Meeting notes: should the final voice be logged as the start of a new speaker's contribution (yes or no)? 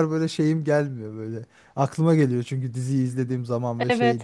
yes